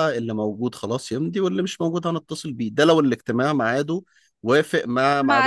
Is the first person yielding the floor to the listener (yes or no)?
yes